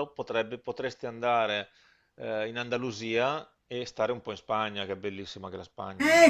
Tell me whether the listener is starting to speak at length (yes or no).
yes